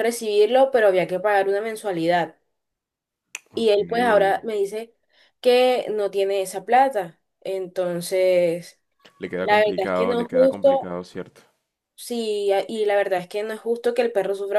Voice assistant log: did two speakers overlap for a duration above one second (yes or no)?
yes